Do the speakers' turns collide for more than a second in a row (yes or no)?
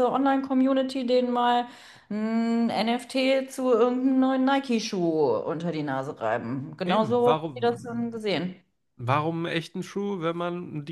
yes